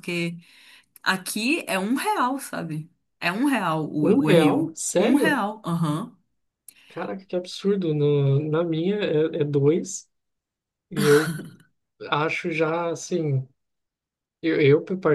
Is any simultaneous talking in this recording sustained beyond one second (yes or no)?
yes